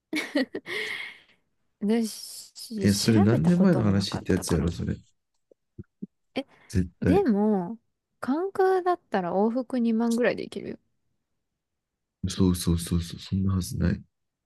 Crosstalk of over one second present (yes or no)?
yes